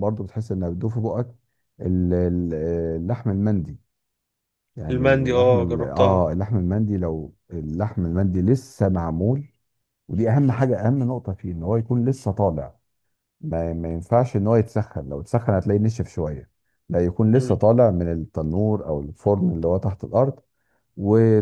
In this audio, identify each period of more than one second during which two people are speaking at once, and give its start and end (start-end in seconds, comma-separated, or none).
4.9-6.3